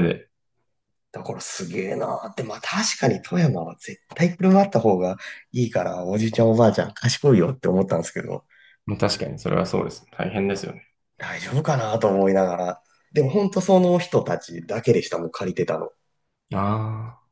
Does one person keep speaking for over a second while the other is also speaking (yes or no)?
no